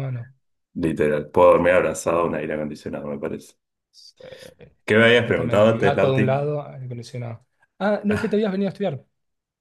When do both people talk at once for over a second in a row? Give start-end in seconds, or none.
5.0-6.5